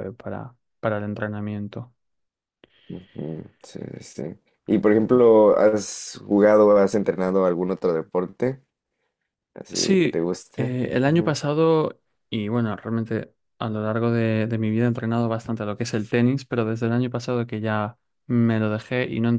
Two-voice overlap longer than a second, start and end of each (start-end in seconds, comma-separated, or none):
9.7-11.4